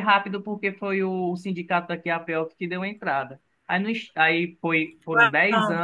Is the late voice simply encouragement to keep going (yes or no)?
yes